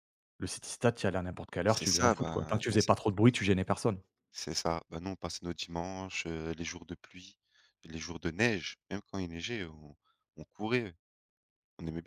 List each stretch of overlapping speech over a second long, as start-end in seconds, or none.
1.7-2.9